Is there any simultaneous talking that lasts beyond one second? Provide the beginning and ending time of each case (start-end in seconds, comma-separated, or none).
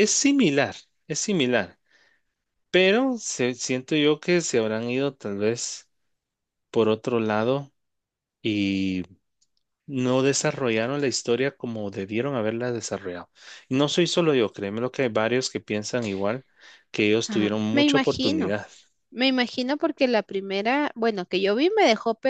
17.3-18.6